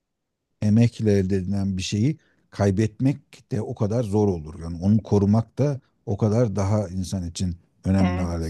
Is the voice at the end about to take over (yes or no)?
yes